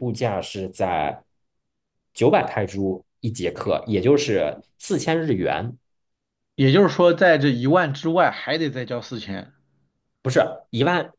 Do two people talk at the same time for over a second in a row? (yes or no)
no